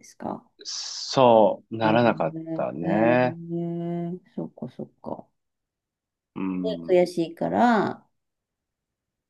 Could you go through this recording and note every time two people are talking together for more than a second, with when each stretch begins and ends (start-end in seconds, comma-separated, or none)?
1.8-3.4